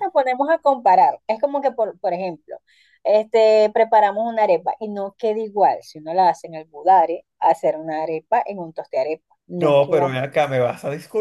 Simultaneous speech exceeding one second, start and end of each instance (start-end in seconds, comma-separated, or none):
none